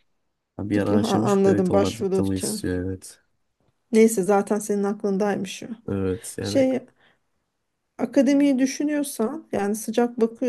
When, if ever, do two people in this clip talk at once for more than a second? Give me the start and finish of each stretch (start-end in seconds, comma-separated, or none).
0.7-2.6